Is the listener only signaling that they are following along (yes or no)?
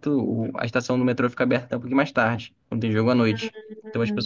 no